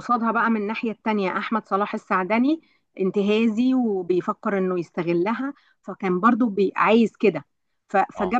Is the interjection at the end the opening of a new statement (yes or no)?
no